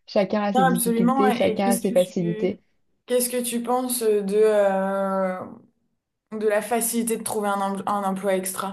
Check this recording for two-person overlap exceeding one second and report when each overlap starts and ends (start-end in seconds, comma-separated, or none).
0.6-2.6